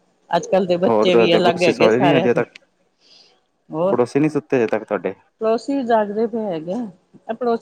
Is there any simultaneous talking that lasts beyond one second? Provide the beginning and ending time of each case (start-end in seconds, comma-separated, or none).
0.9-2.4